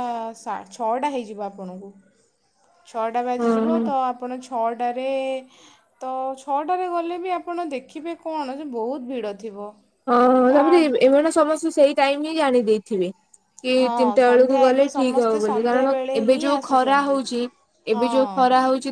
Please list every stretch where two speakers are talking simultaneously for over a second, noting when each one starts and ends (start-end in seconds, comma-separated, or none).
13.8-17.2